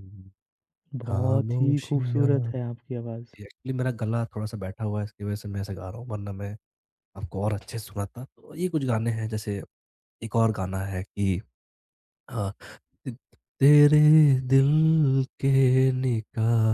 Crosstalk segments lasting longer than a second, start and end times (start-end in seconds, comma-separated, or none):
1.1-2.3